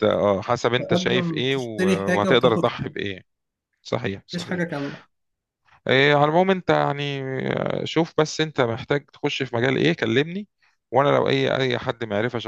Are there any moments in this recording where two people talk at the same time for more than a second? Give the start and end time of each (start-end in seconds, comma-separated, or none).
0.8-2.9